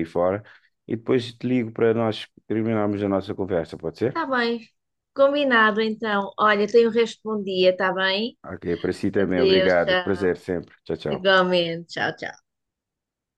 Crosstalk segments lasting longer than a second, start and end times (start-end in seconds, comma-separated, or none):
9.2-10.4